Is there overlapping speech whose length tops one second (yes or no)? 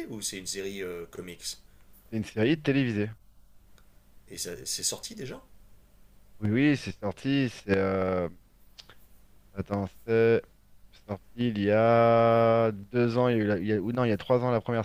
no